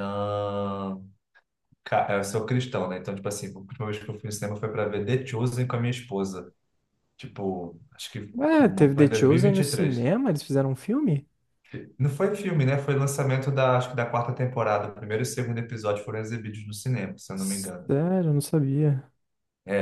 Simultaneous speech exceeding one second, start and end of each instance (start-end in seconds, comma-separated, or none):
8.3-10.1